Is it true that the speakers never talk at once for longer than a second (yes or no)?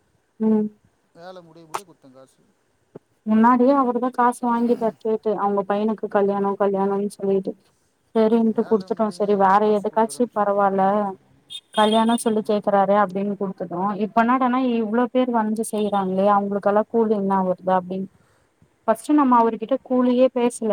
no